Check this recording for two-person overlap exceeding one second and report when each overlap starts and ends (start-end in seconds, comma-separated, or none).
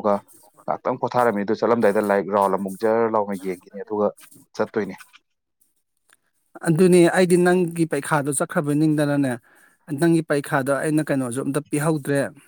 none